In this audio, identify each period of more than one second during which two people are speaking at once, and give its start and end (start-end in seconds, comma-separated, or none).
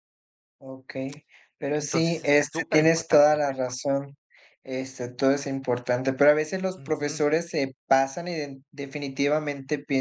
1.8-3.4